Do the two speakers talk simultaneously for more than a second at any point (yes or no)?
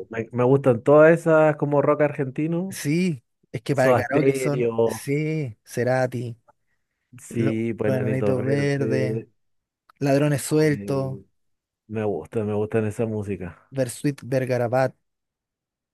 yes